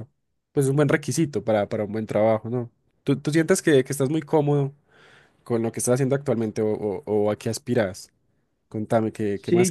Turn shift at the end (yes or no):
yes